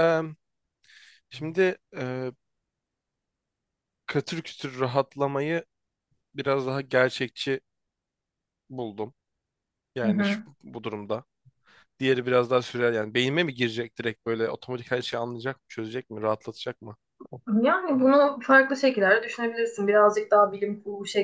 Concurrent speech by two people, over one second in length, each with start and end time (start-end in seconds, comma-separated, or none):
none